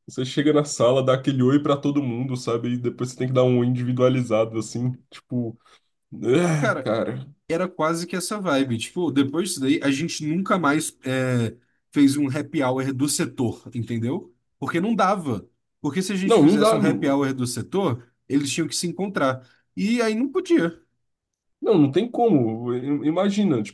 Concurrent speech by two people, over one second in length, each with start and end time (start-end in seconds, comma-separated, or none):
none